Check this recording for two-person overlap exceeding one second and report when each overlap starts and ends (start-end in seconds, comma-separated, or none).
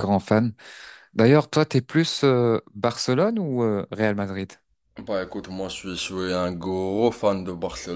none